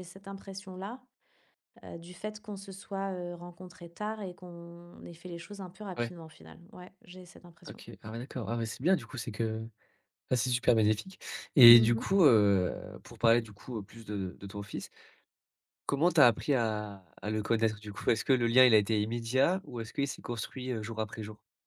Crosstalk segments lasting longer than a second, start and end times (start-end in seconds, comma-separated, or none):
none